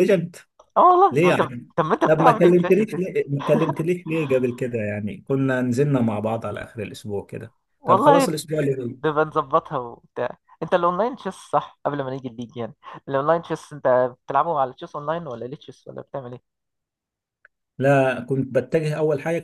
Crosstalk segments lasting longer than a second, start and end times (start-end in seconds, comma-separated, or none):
2.1-3.3